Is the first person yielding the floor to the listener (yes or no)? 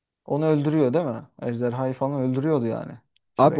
yes